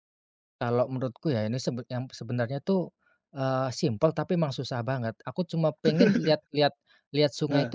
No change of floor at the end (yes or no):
yes